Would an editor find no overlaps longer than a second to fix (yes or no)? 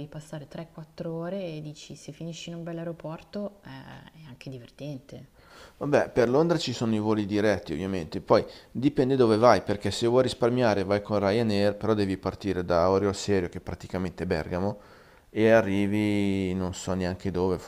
yes